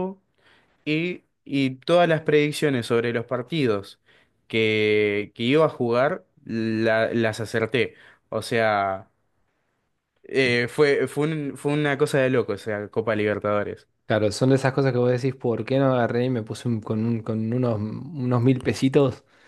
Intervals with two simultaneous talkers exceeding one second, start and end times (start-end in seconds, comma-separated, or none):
none